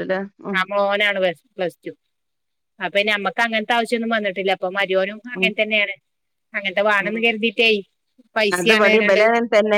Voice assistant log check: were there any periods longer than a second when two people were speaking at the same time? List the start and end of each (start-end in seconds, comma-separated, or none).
none